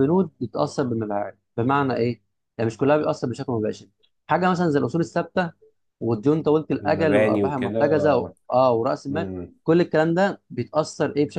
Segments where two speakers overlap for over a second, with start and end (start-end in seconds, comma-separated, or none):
6.8-8.3